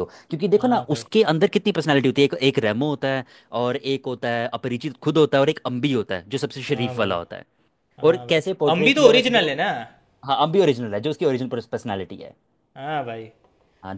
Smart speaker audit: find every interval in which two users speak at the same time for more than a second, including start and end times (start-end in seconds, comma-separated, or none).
8.0-9.5